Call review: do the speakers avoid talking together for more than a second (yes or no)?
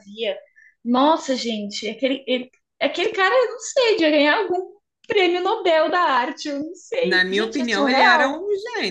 no